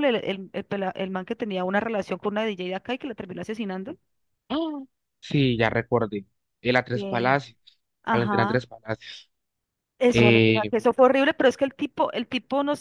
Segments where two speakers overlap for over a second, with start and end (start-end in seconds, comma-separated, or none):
none